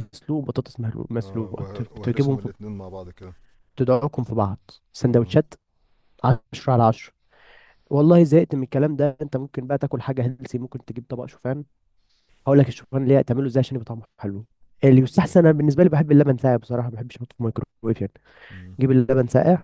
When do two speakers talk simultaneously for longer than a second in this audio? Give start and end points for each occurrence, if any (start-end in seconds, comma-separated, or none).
1.2-2.5